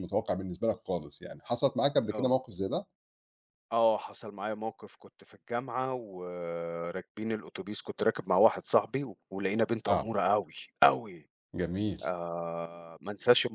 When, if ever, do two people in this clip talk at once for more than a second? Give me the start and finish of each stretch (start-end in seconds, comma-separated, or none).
none